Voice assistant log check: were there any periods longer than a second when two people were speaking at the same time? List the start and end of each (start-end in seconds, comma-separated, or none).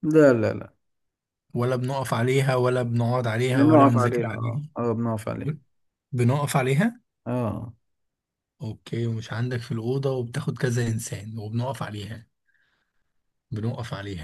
3.5-4.7